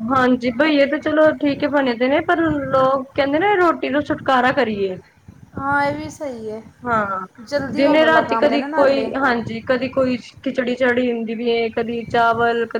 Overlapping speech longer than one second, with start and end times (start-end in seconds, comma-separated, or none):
7.8-9.1